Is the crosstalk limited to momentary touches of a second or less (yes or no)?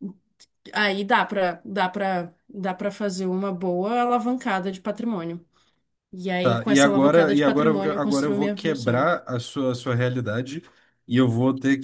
no